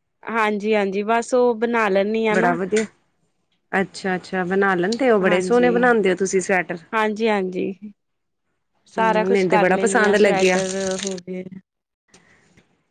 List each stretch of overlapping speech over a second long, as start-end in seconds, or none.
9.0-10.6